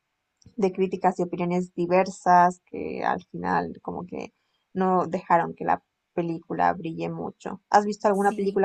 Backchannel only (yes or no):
yes